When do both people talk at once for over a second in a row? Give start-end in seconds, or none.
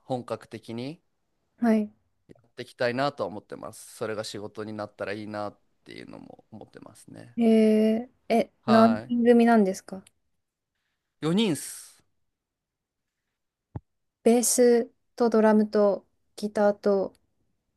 none